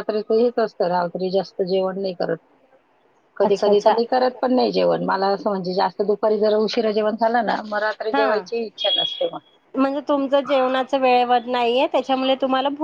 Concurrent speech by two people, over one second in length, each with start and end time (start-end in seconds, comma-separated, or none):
none